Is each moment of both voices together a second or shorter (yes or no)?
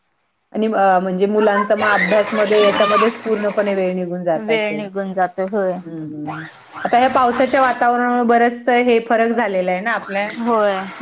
yes